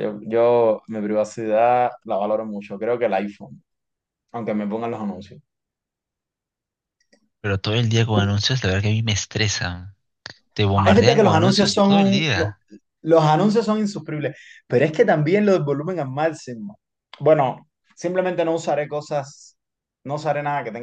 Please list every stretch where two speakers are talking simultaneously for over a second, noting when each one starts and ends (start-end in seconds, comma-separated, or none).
10.7-12.6